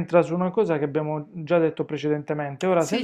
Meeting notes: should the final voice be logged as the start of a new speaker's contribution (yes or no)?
no